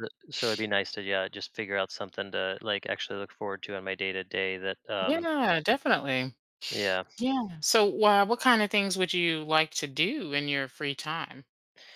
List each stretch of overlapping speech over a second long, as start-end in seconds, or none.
none